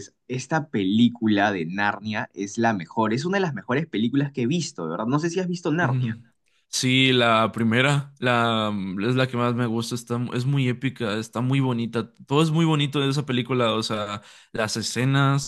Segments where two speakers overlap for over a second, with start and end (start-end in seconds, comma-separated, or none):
none